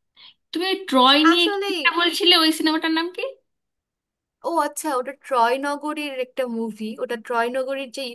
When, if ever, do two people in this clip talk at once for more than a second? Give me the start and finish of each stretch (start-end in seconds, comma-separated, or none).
none